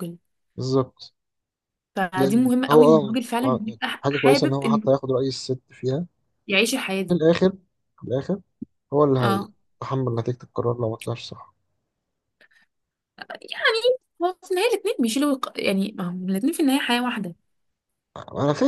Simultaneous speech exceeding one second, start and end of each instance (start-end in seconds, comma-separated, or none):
2.2-4.8